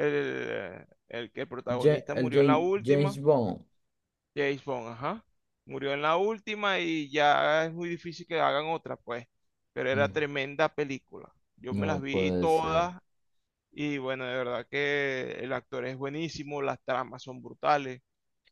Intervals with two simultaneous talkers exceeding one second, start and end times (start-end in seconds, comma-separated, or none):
1.7-3.2, 11.7-12.9